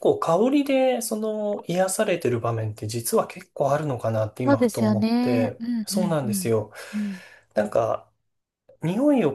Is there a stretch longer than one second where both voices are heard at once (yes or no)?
yes